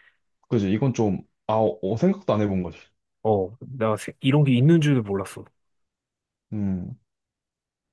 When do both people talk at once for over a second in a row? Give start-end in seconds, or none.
none